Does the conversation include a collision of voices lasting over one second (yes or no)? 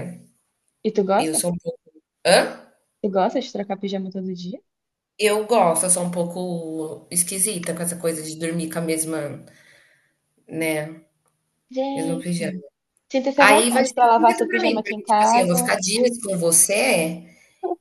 yes